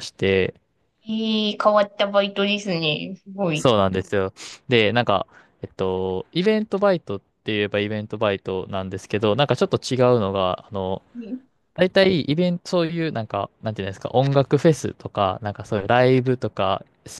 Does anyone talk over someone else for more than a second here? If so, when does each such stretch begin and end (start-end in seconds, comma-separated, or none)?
none